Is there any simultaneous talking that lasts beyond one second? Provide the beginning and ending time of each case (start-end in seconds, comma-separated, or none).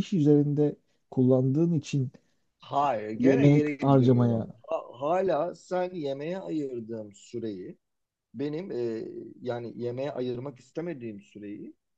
3.2-4.5